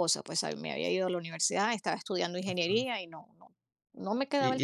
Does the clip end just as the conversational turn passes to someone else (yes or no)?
yes